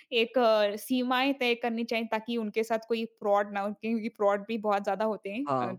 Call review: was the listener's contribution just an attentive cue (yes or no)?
no